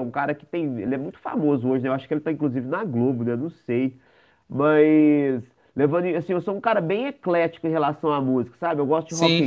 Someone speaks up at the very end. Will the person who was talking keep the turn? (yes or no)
yes